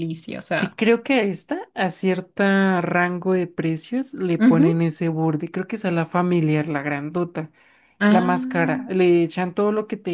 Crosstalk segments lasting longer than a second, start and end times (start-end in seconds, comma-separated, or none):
none